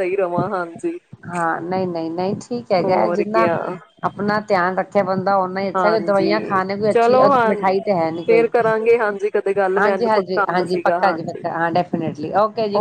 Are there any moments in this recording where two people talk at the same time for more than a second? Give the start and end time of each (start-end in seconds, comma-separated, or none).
5.8-7.5, 9.8-11.4